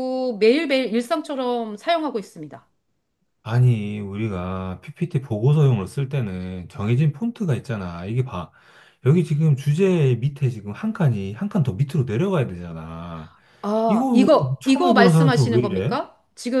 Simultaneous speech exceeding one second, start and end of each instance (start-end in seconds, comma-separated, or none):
13.9-16.0